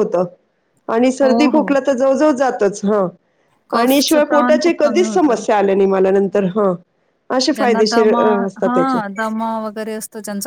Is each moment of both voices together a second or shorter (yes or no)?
no